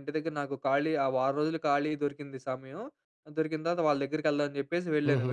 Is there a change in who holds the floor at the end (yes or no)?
no